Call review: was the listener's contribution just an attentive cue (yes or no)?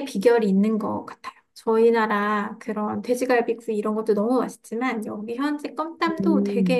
yes